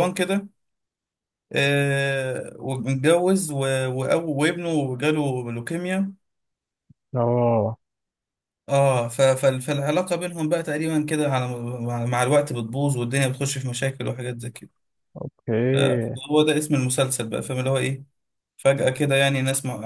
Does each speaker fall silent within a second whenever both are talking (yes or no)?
yes